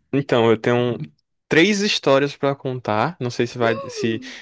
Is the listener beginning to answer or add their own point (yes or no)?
no